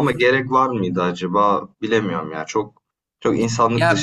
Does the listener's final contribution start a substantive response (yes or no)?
yes